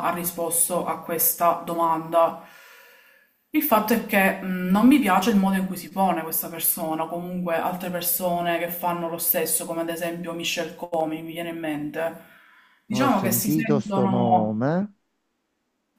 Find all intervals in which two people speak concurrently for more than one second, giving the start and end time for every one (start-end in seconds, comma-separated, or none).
12.9-14.6